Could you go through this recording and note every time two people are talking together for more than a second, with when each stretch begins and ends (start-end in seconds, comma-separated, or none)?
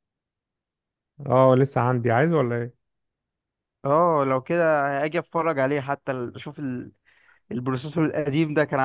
none